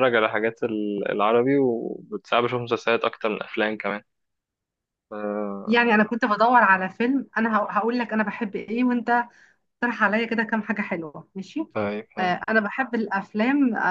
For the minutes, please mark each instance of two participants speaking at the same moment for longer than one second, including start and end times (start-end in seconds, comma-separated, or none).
none